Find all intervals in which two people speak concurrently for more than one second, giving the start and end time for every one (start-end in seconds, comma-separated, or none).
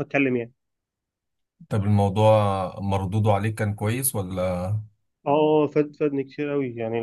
none